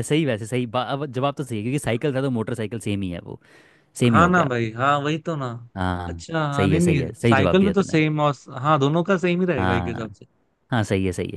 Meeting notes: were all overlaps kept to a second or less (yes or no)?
no